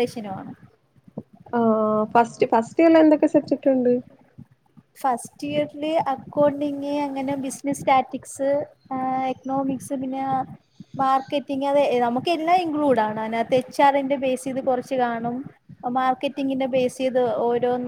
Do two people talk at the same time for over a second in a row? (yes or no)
no